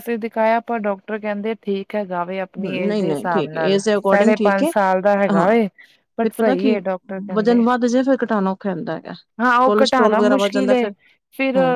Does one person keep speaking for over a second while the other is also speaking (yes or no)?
yes